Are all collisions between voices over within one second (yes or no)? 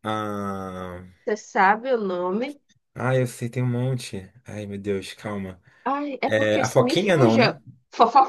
no